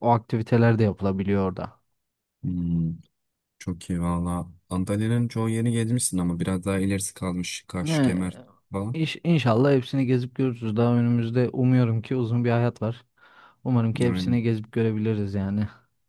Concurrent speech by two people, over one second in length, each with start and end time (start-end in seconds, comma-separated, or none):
none